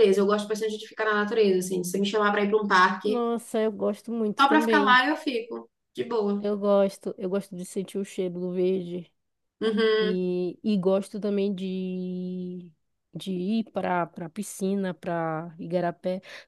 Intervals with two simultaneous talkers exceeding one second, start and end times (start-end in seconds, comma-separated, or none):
none